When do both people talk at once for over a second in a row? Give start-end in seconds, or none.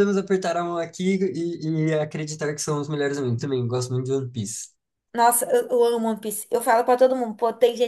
none